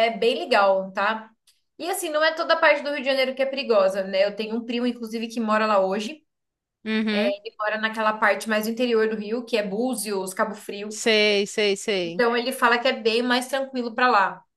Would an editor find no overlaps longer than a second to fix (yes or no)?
yes